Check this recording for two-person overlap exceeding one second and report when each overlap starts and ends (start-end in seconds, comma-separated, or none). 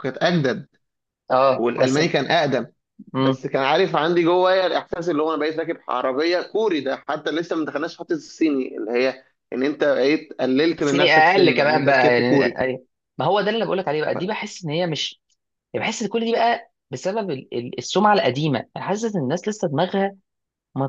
10.8-12.6